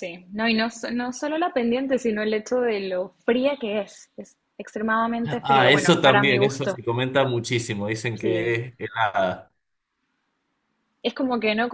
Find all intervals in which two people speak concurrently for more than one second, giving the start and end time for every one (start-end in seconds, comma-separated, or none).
5.4-6.8